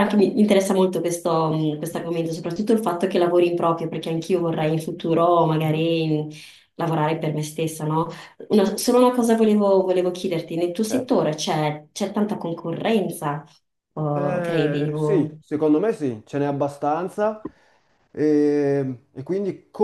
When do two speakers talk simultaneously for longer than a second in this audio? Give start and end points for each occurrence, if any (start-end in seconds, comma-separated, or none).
14.2-15.4